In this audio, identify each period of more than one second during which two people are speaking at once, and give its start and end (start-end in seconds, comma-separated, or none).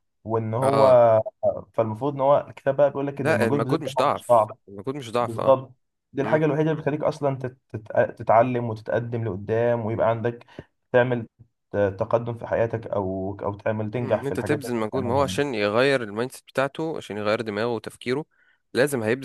3.2-4.5, 14.0-15.4